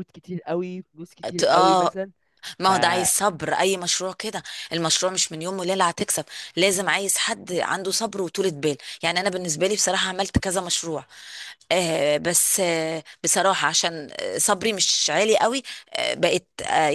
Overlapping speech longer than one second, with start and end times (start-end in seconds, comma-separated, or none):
none